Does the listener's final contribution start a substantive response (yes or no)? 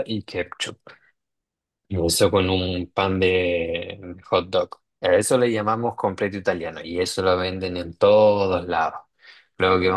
no